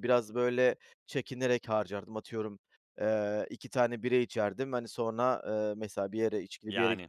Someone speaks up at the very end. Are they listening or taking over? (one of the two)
listening